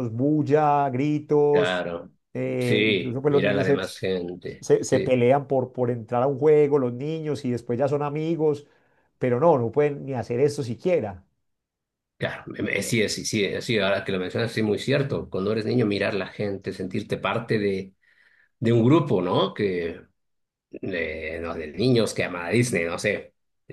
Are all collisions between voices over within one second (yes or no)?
no